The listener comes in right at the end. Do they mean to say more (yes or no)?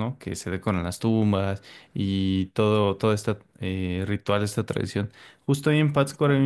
no